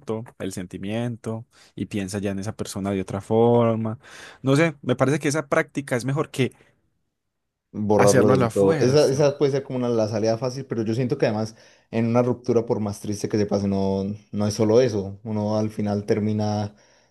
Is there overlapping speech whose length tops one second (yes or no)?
yes